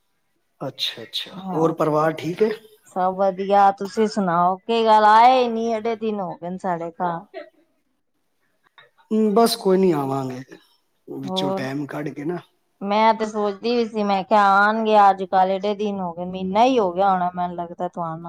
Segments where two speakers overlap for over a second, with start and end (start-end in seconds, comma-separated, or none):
none